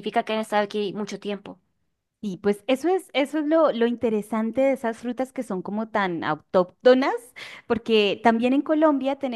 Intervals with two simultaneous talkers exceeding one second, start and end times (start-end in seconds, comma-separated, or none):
none